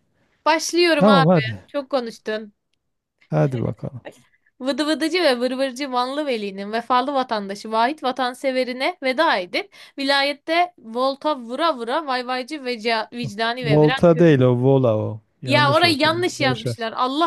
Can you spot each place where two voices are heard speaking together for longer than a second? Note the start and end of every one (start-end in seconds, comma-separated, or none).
15.4-16.8